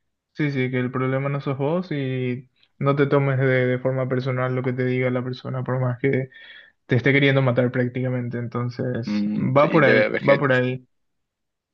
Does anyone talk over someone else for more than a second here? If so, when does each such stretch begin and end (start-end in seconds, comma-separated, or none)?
9.1-10.8